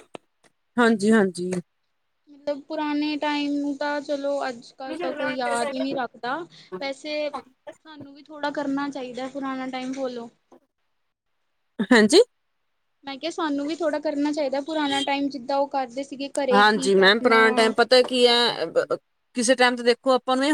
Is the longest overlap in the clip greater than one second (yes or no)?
no